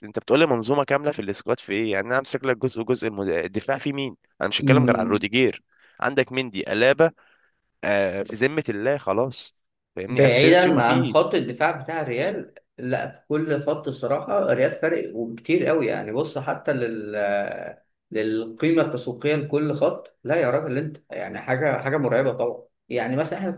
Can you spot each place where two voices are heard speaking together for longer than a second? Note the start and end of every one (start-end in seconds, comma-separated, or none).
10.1-11.3